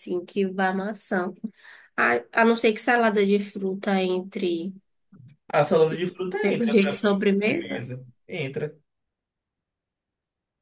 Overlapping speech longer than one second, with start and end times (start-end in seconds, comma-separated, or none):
6.4-7.9